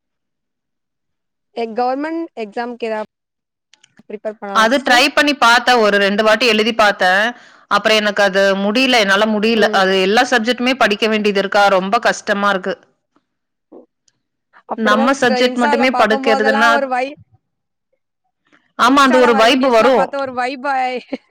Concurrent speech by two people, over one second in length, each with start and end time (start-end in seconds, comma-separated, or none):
14.9-16.9